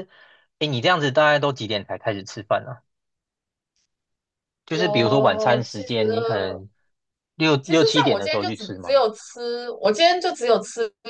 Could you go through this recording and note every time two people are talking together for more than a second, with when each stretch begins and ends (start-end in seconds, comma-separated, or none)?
4.7-6.6, 7.6-9.0